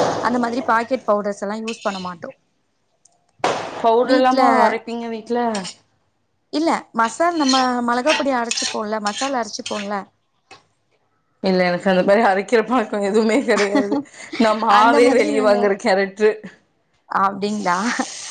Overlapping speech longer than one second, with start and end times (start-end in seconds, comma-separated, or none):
none